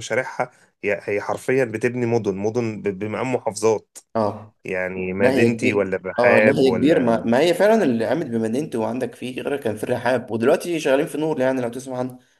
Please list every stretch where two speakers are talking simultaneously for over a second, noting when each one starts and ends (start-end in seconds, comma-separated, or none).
5.2-7.3